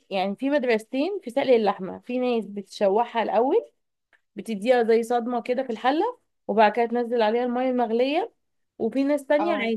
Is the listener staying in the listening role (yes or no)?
yes